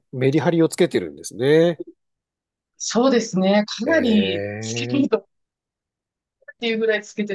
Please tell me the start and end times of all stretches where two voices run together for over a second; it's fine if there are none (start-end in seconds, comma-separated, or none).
3.9-5.2